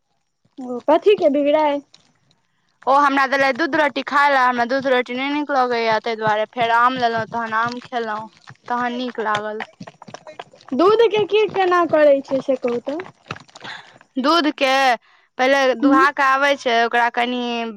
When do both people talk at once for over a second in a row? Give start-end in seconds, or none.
none